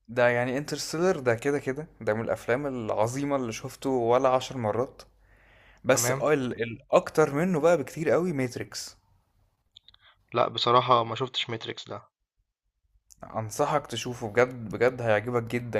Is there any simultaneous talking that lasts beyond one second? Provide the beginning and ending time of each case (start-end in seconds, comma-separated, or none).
none